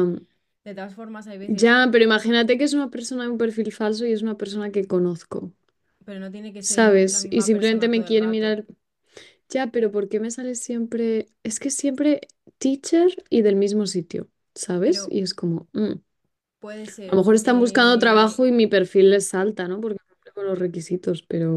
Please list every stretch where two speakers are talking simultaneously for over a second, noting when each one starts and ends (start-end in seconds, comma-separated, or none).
6.6-8.6, 17.1-18.4